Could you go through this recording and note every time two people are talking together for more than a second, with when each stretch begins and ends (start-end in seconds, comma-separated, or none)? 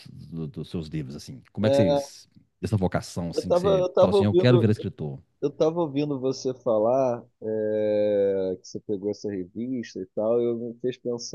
3.3-4.7